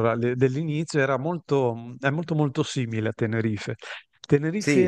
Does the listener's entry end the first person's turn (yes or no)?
no